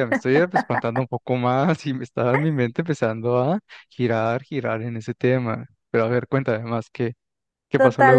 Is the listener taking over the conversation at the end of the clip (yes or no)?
yes